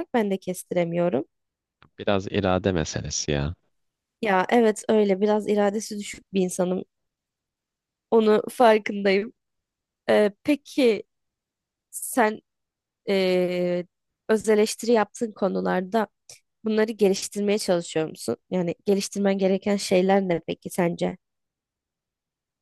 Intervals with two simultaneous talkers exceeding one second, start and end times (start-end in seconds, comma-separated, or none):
none